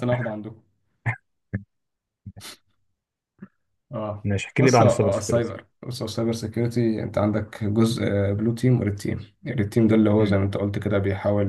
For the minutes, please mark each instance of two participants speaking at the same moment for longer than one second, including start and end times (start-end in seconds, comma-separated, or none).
4.2-5.5